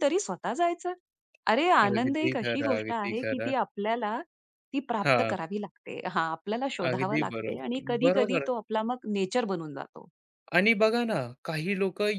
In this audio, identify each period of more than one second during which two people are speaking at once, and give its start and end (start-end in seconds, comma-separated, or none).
1.9-3.5, 6.9-8.5